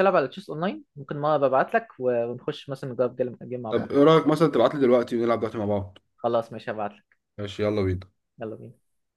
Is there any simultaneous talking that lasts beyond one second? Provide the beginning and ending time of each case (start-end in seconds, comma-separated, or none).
none